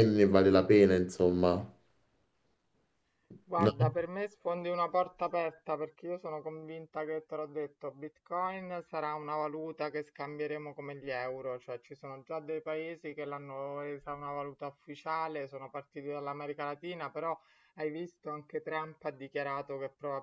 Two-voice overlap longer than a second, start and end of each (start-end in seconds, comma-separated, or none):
none